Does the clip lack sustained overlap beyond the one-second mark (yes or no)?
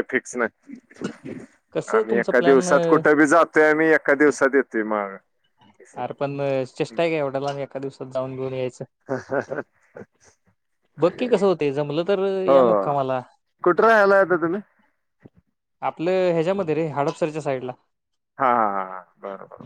yes